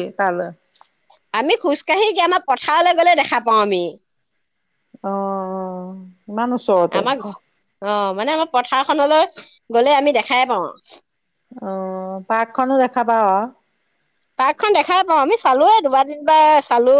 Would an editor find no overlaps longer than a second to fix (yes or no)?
yes